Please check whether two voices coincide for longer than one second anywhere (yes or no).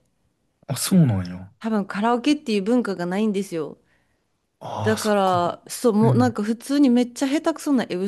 no